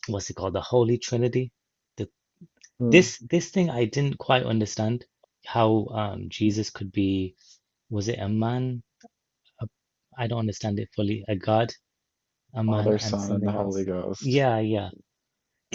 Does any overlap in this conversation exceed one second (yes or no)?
yes